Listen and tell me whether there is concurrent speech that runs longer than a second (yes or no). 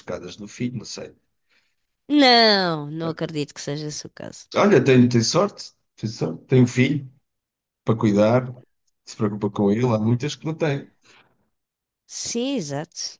no